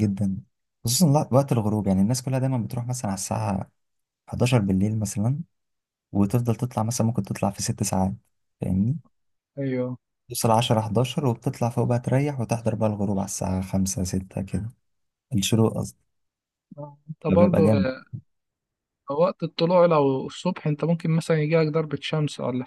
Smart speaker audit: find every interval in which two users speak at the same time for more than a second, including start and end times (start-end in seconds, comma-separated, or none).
none